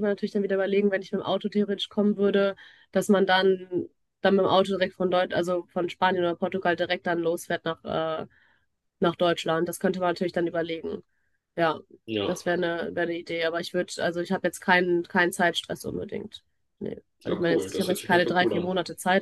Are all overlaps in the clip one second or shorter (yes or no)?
no